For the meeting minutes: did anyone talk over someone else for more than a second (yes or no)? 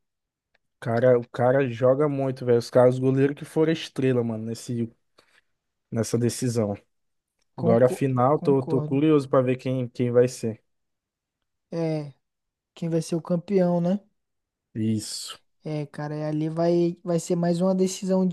yes